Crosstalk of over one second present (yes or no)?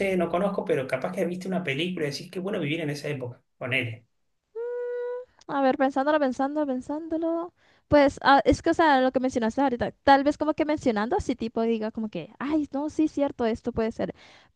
no